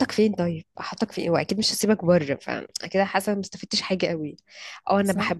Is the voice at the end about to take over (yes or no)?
no